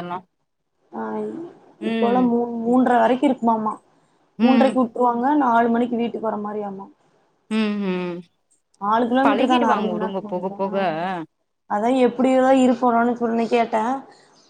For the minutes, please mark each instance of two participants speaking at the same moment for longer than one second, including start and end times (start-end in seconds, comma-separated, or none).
9.2-10.7